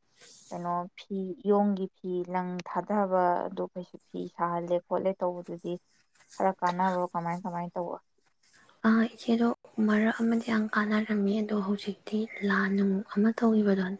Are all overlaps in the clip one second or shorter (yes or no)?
yes